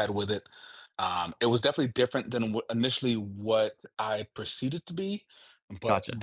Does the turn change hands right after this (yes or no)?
no